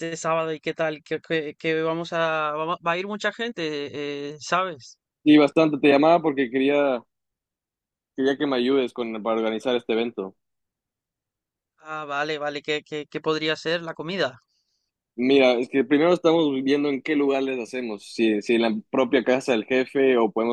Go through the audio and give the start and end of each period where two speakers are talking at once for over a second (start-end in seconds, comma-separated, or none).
none